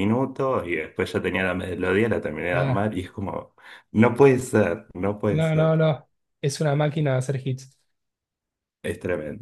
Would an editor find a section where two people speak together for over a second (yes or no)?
no